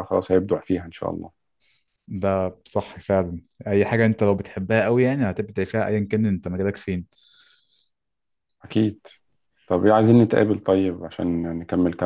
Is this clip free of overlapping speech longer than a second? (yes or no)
yes